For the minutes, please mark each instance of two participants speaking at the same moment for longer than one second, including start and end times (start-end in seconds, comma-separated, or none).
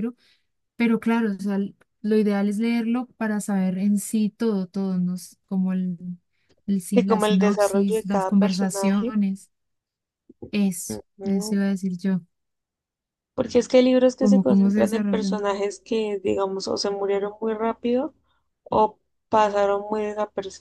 6.9-9.1, 14.2-15.4